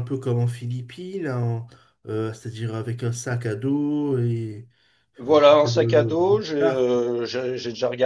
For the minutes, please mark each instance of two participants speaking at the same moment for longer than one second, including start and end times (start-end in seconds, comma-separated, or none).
5.2-6.9